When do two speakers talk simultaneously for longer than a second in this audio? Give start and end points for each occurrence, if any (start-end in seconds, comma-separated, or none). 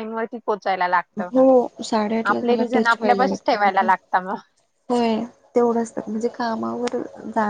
2.3-3.9